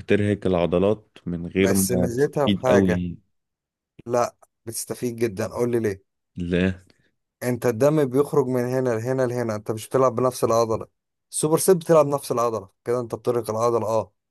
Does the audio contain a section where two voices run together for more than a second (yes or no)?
yes